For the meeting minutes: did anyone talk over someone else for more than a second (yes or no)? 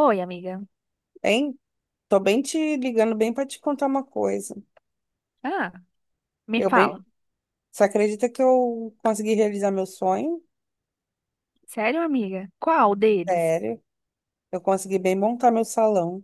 no